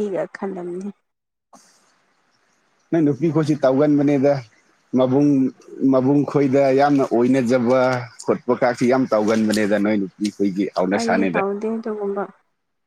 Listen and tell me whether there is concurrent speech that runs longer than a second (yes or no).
no